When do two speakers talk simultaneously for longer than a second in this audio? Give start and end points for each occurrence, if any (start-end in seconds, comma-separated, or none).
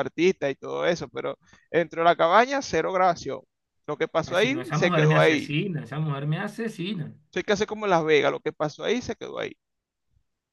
4.2-5.5